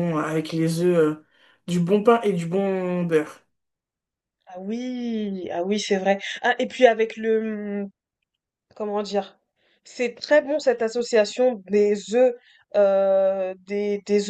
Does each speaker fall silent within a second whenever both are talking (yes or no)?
yes